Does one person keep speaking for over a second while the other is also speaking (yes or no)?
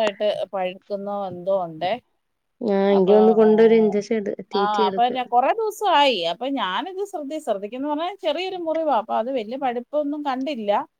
no